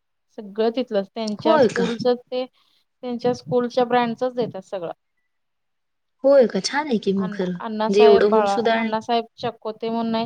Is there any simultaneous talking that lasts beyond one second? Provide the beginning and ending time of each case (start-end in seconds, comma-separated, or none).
7.2-8.9